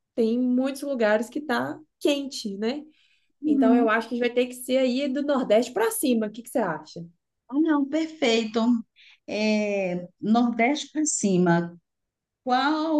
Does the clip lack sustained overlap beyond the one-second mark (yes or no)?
yes